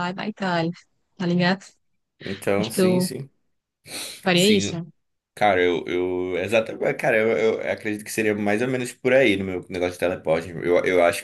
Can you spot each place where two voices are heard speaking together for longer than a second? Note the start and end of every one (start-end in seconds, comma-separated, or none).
none